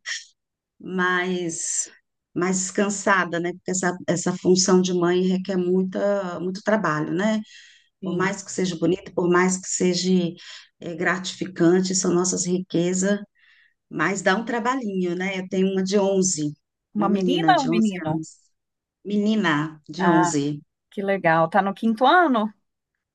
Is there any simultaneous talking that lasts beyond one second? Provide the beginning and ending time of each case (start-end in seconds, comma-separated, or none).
16.9-18.2